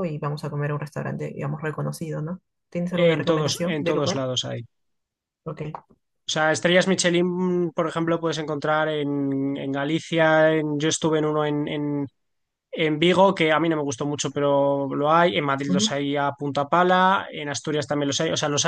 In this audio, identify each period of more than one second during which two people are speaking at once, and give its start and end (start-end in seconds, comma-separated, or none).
3.0-4.2